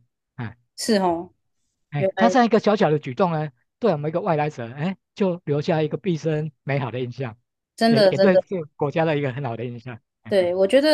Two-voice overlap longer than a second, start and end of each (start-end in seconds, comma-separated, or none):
none